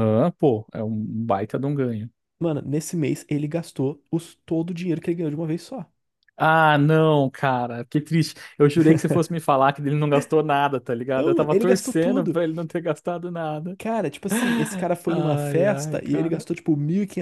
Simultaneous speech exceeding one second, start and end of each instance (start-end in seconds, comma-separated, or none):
11.2-12.4, 15.1-16.4